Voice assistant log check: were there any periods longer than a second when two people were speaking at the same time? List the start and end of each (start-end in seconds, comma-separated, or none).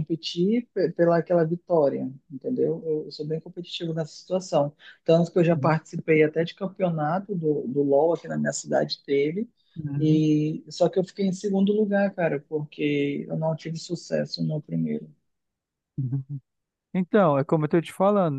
none